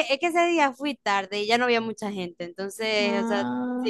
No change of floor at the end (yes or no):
yes